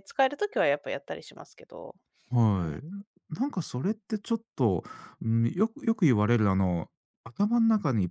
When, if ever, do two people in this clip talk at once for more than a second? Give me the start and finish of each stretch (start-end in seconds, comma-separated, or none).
none